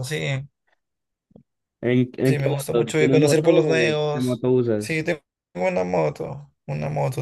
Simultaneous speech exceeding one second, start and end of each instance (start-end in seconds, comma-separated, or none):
2.2-5.0